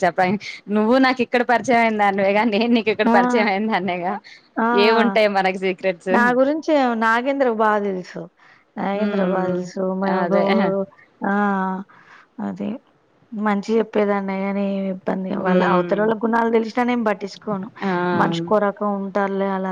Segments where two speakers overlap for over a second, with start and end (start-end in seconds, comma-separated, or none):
none